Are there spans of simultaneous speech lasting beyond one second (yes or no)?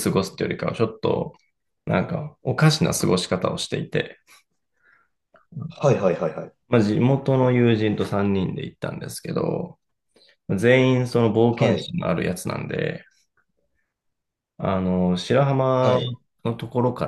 no